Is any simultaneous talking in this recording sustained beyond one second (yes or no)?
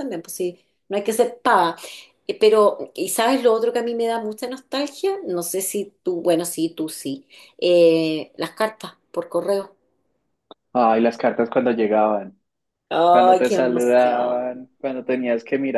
yes